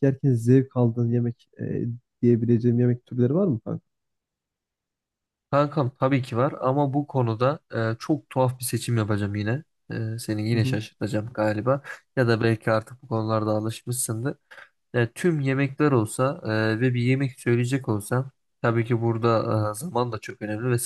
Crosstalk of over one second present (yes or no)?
no